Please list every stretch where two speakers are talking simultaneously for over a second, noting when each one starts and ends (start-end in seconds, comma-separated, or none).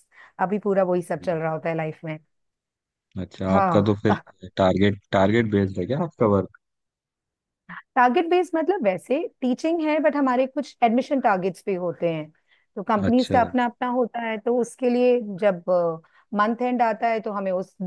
none